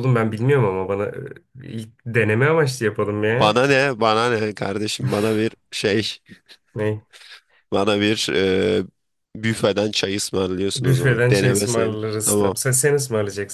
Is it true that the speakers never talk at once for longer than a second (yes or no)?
no